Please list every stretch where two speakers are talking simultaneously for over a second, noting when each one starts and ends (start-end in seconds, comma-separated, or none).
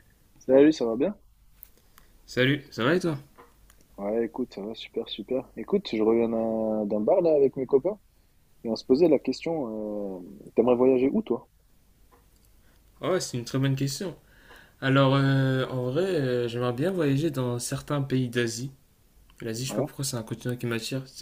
none